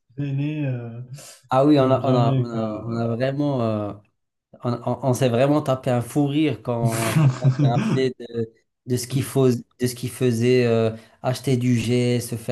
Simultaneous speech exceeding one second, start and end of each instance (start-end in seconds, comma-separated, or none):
1.8-3.1